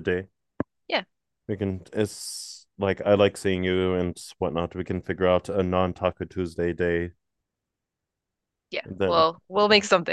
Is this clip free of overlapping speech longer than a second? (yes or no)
yes